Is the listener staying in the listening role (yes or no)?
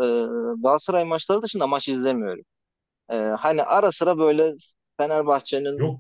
yes